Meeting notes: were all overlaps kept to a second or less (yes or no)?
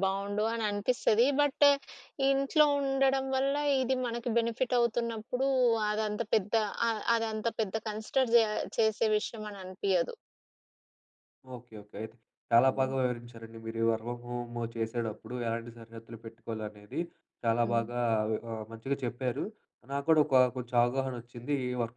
yes